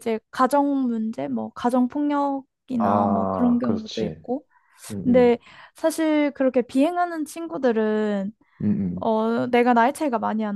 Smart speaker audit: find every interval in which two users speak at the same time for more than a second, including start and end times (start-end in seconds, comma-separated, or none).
2.8-4.2